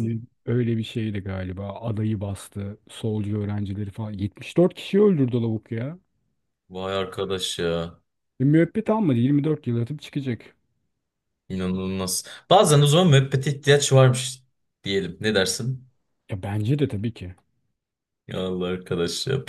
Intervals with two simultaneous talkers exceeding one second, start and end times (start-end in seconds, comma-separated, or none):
none